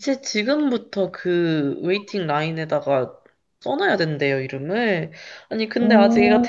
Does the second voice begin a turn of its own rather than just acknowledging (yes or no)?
no